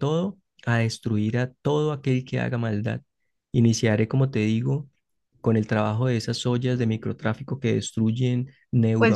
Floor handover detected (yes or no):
yes